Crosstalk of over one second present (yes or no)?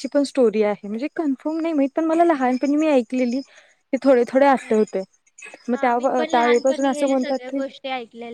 yes